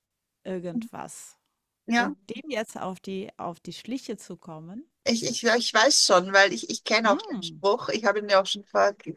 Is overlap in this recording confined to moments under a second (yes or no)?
yes